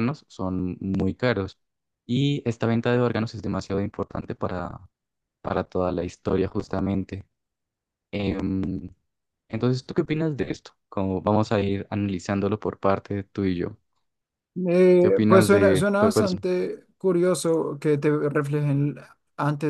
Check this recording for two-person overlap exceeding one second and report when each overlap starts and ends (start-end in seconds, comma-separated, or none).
15.0-16.3